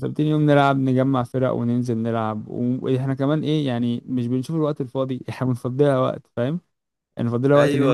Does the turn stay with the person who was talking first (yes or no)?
yes